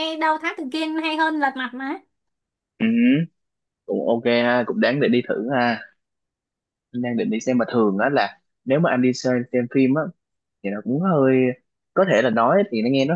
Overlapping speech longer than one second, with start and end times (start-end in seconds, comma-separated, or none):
none